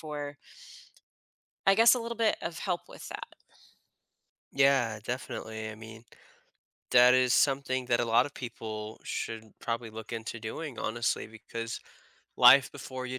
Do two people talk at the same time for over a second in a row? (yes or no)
no